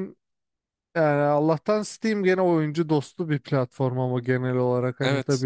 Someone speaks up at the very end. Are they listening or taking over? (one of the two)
listening